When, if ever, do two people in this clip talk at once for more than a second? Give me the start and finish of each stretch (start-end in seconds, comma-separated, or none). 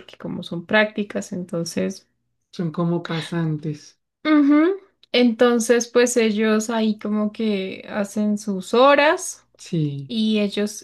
none